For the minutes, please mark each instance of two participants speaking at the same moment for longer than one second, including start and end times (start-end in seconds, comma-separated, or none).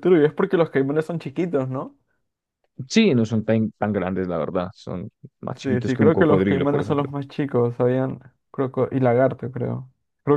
5.6-7.1